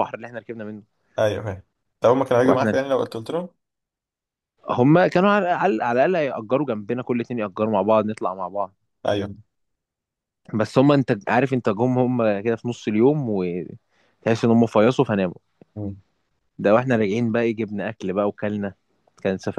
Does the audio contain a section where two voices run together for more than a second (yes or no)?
no